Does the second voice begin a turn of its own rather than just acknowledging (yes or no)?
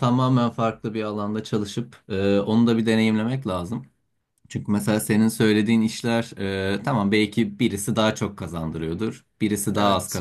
no